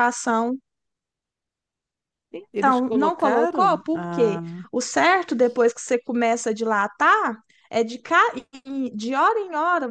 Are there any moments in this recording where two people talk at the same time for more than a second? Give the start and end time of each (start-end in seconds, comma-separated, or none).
2.6-4.6